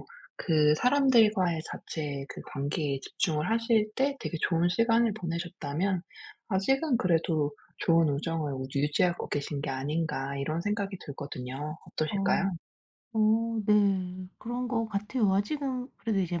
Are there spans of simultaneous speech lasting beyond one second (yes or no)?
no